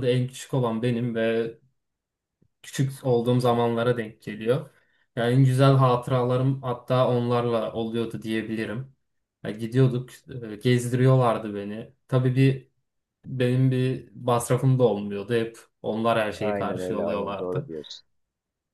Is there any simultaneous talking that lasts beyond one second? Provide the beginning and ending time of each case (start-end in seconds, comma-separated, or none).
16.4-17.7